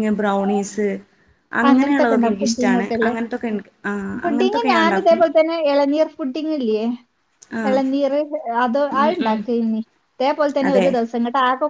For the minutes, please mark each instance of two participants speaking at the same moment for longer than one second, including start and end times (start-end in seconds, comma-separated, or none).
1.7-3.1